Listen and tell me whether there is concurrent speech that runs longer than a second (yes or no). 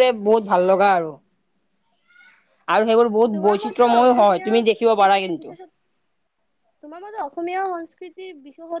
yes